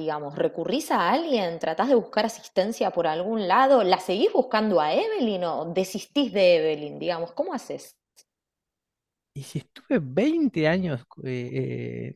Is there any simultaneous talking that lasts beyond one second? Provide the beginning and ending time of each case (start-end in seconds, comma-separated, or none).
none